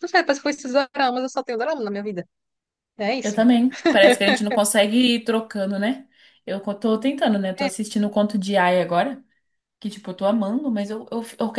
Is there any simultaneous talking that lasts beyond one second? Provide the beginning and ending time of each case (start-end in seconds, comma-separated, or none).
none